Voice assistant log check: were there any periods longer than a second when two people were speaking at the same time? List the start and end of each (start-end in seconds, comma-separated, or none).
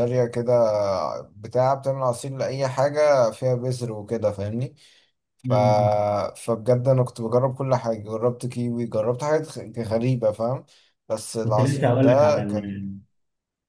11.4-12.9